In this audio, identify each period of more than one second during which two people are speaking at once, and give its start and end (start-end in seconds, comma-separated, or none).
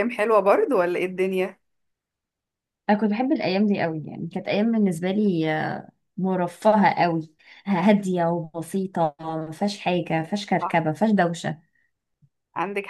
none